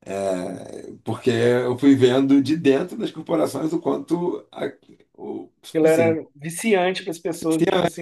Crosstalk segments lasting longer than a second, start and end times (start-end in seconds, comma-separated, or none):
none